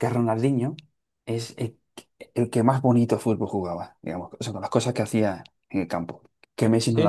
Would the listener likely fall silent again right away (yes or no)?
no